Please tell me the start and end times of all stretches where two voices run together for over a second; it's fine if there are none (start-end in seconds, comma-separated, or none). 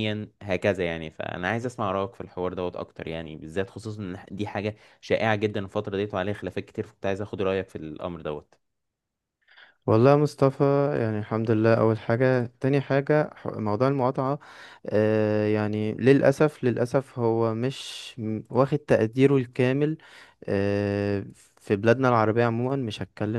none